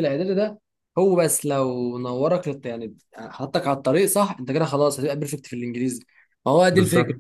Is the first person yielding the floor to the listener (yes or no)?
no